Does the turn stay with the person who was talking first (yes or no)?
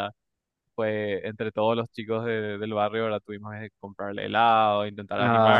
yes